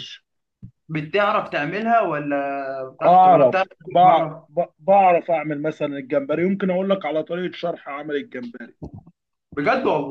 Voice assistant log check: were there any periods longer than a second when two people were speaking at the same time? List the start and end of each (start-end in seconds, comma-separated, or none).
3.1-4.5